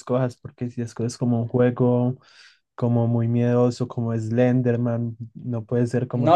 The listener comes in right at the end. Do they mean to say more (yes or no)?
yes